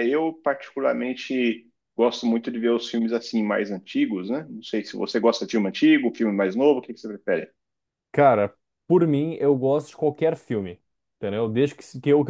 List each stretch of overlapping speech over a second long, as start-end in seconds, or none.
none